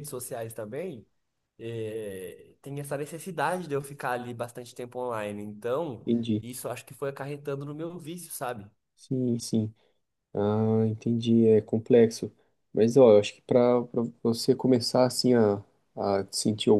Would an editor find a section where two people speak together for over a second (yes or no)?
no